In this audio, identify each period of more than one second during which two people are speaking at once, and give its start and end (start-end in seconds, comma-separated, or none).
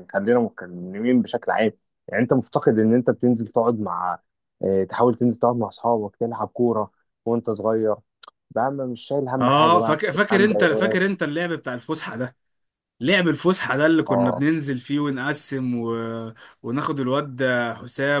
9.4-11.0